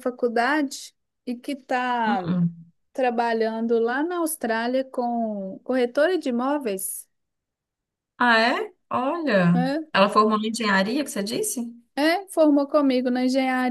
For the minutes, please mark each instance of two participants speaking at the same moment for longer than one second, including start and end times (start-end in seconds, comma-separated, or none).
none